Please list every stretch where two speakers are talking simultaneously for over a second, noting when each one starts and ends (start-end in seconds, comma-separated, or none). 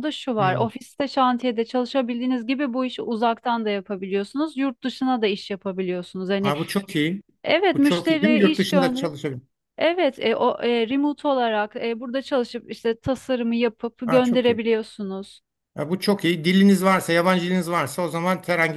7.7-9.1